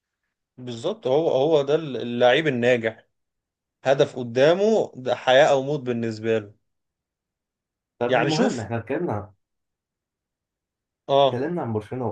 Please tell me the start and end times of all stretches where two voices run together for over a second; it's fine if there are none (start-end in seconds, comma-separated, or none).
none